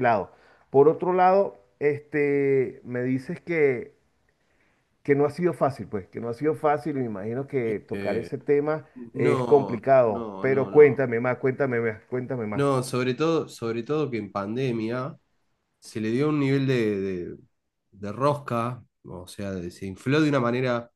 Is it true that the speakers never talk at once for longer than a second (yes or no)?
no